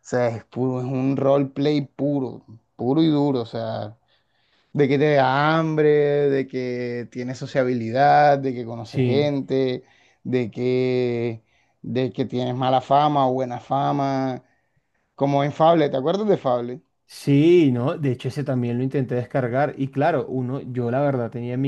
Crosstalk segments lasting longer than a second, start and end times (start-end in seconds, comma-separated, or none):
none